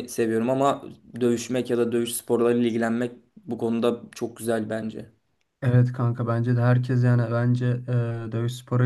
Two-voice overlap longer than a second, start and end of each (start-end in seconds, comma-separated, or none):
none